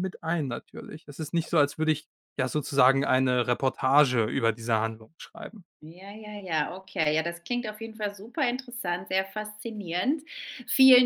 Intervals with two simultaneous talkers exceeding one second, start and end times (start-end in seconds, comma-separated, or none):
none